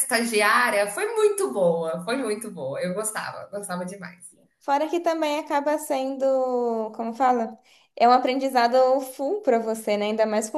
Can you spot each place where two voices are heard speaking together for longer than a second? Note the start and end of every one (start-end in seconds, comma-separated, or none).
none